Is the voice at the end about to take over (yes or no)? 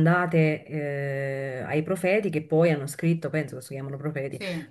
no